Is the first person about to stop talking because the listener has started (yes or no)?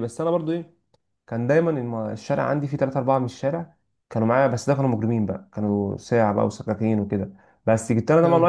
no